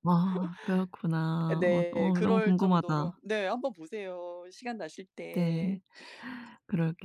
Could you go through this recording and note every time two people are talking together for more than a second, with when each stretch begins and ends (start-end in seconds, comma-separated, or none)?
1.6-3.2